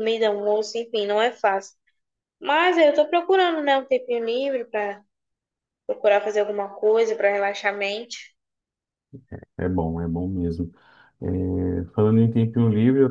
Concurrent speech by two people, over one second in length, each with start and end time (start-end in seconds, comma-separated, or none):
none